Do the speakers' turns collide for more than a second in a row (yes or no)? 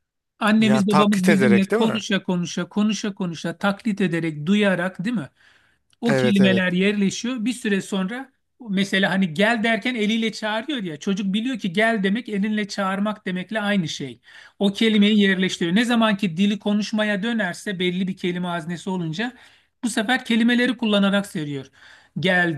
yes